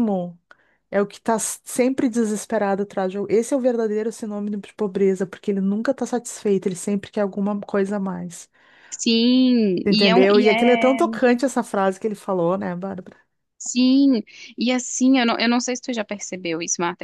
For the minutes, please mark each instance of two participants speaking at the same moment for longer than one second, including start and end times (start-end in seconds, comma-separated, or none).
9.8-11.2